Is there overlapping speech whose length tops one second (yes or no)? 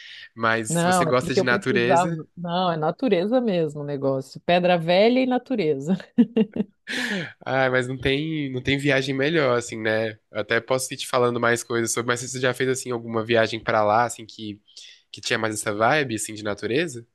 yes